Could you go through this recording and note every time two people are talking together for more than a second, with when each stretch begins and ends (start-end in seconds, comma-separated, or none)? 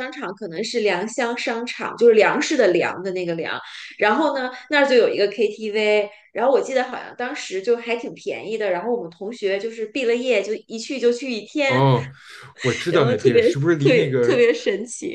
12.9-14.4